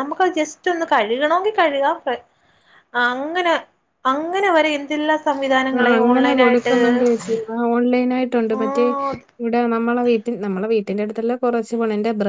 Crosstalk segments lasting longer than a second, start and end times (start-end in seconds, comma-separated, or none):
none